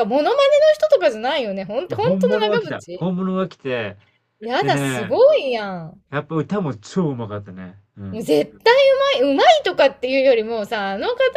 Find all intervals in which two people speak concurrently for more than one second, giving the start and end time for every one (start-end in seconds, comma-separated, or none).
1.9-3.1